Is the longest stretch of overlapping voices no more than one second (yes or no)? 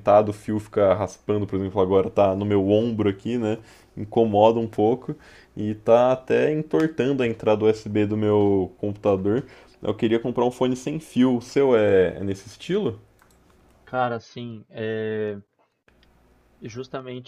yes